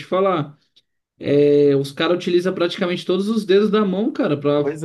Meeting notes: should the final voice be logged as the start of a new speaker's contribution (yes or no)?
yes